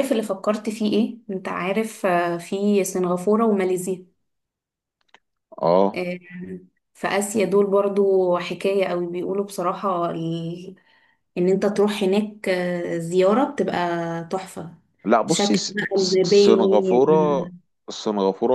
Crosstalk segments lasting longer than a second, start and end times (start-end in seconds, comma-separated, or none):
15.3-17.5